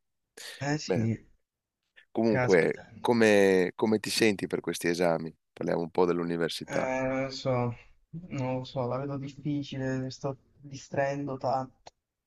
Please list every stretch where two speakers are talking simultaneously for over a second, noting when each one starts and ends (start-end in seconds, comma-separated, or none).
none